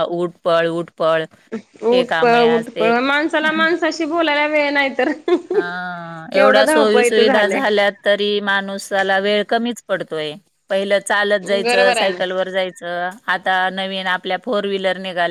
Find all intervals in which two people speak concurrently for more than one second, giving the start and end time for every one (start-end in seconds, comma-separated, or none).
6.3-7.6